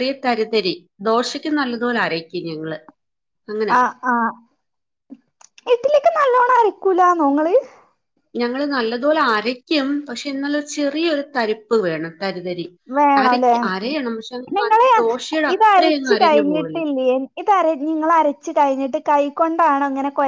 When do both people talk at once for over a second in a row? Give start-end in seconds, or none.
15.5-16.8